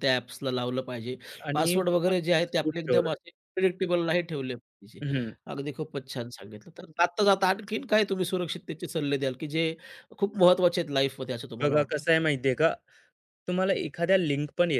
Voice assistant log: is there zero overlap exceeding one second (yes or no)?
no